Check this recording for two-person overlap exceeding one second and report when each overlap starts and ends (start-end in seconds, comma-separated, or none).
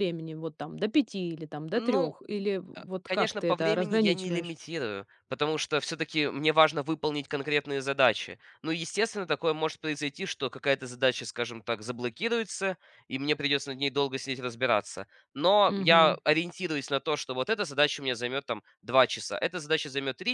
2.8-4.5